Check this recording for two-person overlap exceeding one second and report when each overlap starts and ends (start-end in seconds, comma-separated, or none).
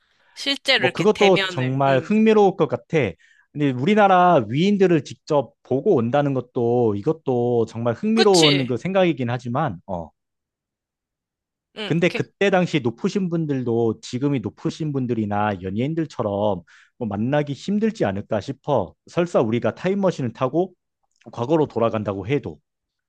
0.8-2.1